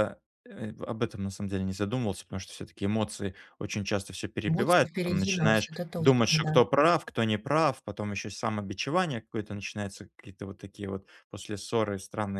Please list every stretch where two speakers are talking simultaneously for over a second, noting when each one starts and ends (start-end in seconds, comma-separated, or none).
4.5-6.5